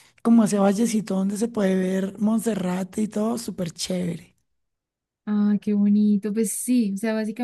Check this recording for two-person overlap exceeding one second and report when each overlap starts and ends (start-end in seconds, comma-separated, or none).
none